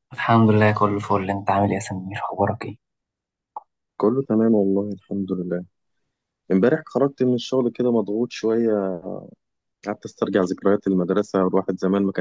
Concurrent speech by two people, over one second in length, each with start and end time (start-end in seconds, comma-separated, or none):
none